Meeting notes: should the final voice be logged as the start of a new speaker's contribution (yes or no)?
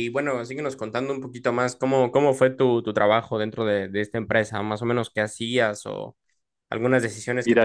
yes